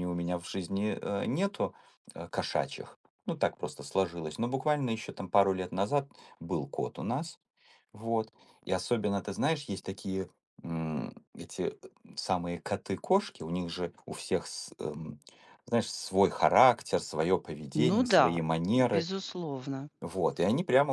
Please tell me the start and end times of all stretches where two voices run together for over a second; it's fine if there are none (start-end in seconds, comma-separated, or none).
17.7-19.1